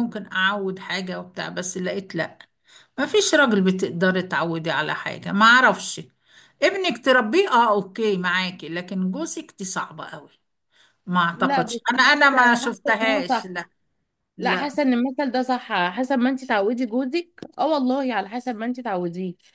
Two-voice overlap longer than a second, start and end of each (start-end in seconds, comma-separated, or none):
11.4-13.6